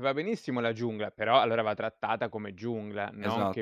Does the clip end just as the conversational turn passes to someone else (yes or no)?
yes